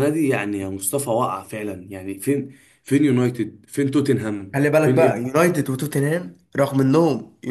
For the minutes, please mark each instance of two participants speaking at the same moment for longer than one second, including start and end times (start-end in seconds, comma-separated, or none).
none